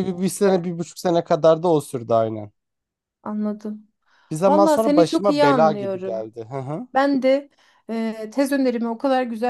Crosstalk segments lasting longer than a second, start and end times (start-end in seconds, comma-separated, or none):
4.5-6.3